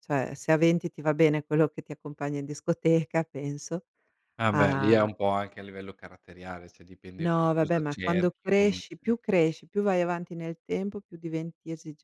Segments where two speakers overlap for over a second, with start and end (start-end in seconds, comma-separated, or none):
7.2-8.8